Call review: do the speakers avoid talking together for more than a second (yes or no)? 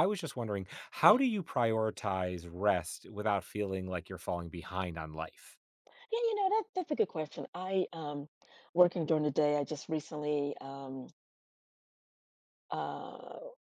yes